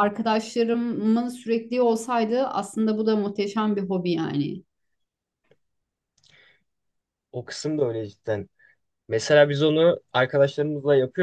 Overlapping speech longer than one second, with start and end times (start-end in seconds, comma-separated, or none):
none